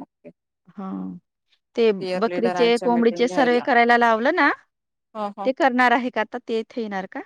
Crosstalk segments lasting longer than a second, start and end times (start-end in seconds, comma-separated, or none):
2.0-3.7